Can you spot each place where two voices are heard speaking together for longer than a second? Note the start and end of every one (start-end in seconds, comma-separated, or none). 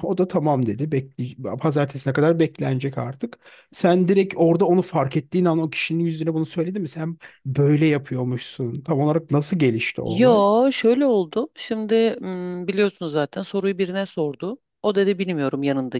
none